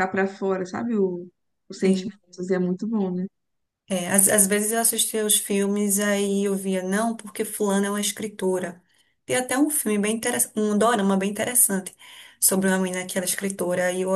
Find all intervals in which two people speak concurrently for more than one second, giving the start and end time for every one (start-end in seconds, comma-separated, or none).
none